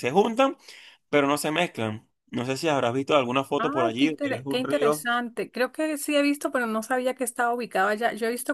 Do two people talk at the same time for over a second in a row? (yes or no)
yes